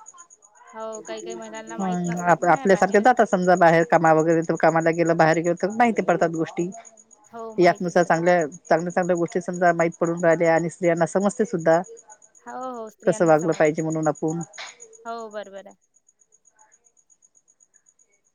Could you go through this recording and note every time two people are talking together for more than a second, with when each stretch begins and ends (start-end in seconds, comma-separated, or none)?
1.8-3.2